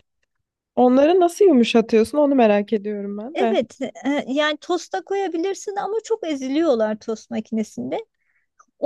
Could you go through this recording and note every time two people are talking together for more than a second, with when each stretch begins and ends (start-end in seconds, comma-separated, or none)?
none